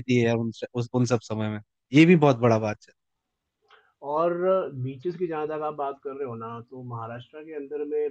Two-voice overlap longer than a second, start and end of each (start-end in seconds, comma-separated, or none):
none